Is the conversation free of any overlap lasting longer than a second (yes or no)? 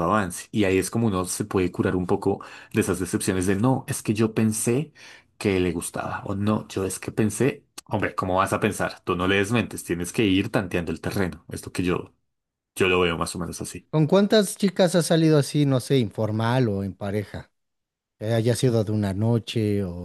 yes